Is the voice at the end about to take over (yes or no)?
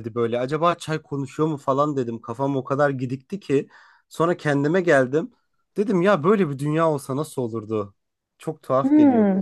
yes